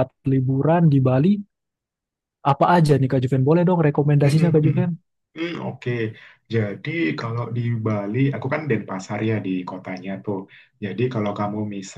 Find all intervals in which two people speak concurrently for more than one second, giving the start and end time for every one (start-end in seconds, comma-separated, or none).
none